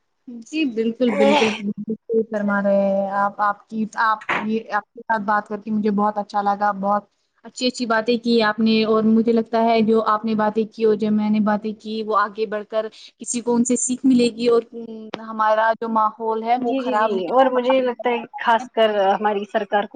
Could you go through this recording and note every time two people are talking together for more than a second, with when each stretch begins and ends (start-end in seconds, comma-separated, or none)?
16.7-18.5